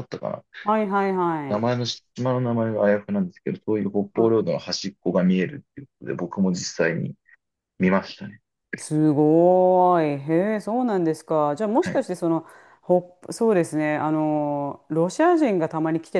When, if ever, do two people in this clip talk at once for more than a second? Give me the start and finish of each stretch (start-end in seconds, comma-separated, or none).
none